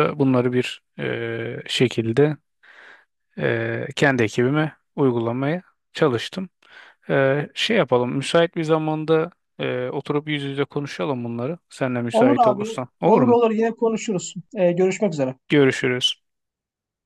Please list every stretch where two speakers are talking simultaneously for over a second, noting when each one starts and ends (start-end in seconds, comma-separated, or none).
12.1-13.4